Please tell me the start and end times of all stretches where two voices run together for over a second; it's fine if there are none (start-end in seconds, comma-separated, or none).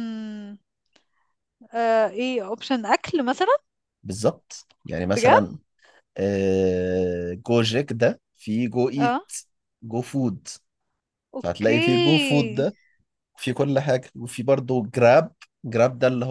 11.4-12.7